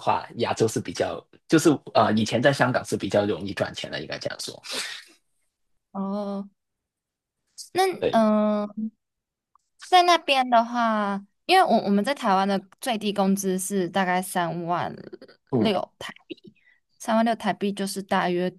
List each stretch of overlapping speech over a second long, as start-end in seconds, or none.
none